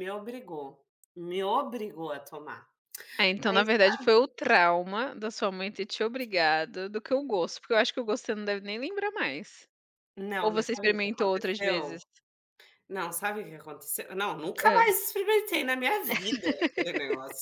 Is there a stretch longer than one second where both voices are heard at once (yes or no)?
yes